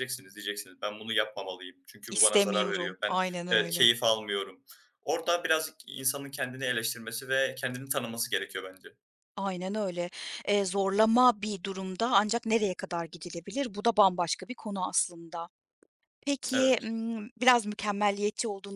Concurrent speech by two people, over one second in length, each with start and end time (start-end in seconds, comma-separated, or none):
2.1-3.9